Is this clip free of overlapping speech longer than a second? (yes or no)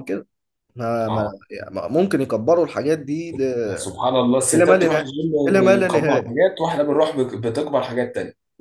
no